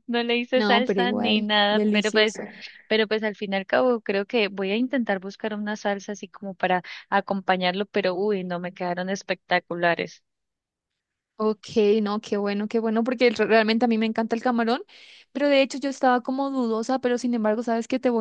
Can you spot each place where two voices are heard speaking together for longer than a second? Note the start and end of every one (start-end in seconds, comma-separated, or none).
0.6-2.3